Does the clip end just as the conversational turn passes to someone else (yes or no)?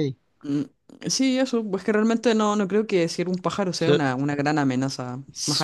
yes